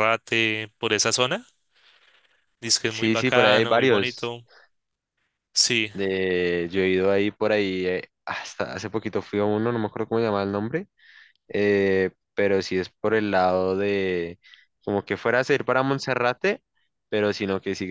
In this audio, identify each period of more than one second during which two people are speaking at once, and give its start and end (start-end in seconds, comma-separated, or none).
2.8-4.3